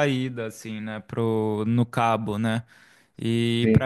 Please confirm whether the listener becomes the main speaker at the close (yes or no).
no